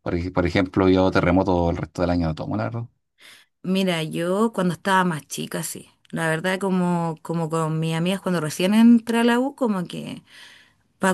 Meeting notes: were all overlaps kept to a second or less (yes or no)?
yes